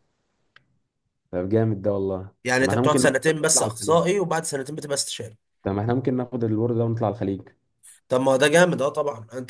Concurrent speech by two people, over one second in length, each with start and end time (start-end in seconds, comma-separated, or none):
2.4-4.0